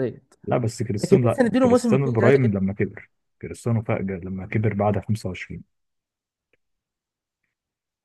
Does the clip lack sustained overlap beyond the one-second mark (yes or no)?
no